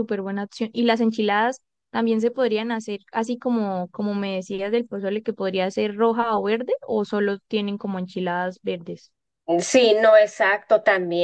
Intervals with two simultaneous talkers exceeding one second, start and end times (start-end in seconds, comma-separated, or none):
none